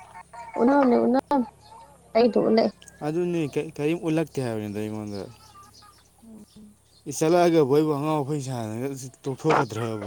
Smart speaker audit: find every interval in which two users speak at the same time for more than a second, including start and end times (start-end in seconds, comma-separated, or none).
none